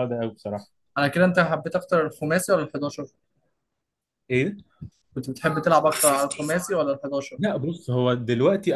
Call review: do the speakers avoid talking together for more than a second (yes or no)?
yes